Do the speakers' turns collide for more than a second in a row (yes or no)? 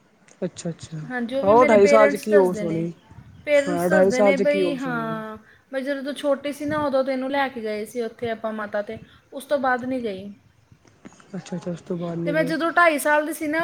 yes